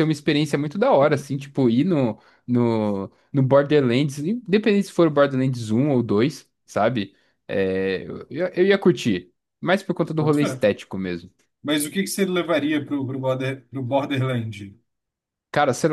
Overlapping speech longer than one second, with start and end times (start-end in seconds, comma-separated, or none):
none